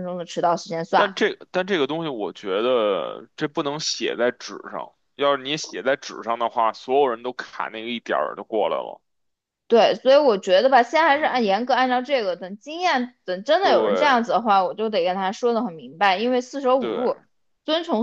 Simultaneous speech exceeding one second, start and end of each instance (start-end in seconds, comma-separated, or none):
none